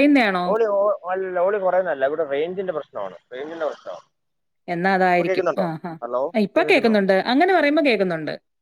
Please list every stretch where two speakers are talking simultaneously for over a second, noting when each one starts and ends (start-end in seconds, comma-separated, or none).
none